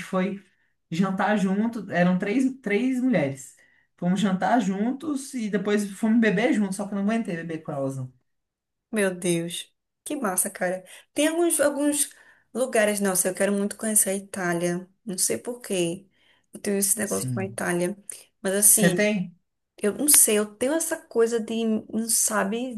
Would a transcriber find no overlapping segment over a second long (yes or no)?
yes